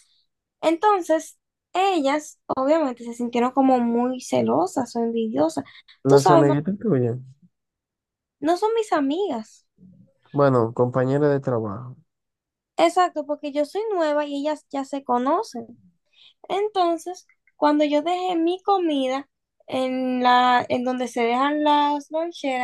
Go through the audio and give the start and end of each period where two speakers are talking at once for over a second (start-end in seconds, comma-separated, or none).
none